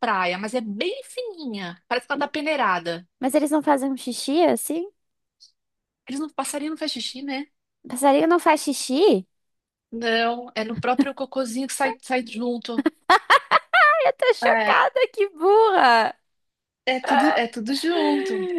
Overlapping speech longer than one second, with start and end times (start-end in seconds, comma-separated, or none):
none